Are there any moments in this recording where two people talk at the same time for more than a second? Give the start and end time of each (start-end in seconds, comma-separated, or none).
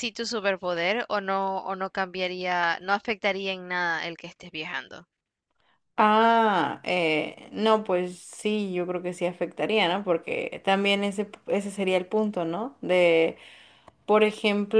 none